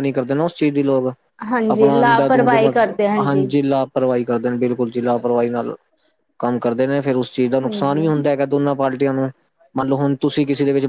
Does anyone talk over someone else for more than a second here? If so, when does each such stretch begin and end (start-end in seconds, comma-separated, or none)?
1.8-3.1